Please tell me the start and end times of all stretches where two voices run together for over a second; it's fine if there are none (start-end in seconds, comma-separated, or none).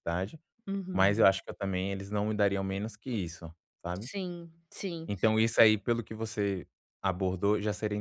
none